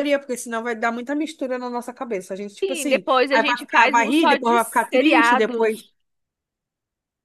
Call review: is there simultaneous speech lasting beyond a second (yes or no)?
yes